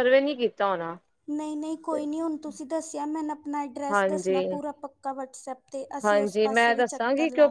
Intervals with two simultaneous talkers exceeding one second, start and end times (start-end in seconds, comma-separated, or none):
none